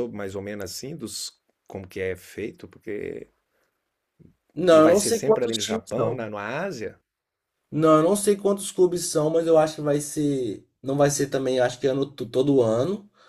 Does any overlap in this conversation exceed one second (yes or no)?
yes